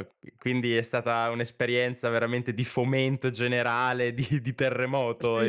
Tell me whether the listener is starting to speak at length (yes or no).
yes